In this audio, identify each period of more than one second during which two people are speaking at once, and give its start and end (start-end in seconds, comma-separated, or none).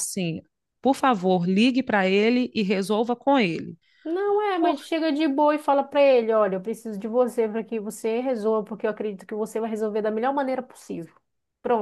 none